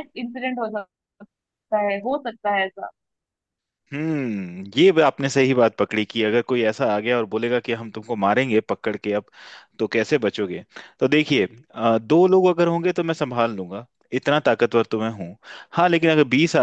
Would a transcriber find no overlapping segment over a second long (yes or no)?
yes